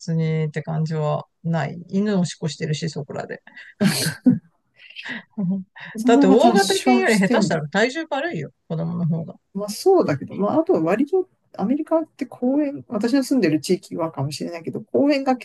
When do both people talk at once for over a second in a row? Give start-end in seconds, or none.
6.0-7.6